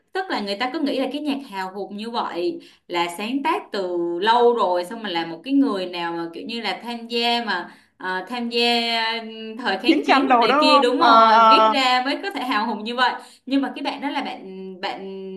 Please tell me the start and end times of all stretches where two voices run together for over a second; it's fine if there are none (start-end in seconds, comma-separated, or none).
9.8-11.7